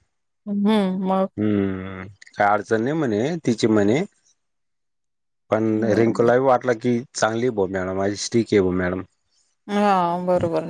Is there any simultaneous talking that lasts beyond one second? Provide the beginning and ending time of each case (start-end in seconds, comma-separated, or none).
none